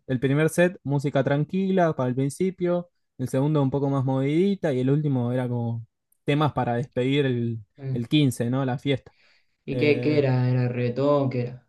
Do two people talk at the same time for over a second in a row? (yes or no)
no